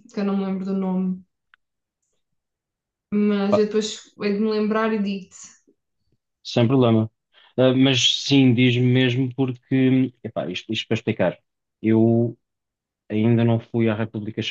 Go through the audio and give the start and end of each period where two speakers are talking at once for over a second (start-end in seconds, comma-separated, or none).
none